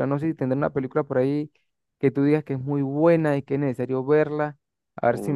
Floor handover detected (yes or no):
yes